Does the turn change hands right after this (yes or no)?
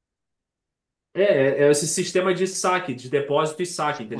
yes